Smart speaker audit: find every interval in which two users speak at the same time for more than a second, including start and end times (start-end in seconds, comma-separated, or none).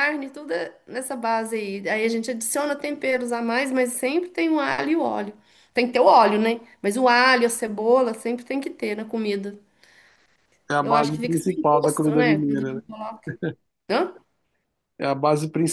10.8-12.4